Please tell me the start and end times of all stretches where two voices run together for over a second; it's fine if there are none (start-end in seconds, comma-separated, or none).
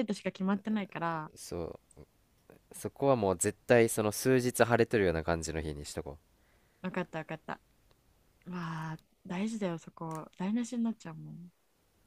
none